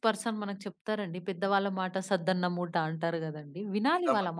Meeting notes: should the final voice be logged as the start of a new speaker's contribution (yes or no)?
yes